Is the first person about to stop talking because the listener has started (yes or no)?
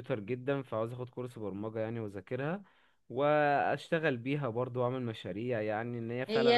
yes